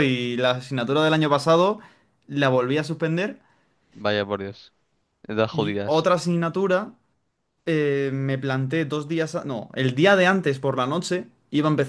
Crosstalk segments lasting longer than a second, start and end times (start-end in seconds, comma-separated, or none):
none